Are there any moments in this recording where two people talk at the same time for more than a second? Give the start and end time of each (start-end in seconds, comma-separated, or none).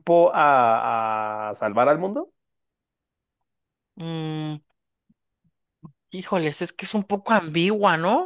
none